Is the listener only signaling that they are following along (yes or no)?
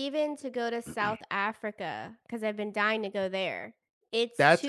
no